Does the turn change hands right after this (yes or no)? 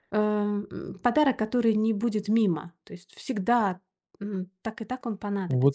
yes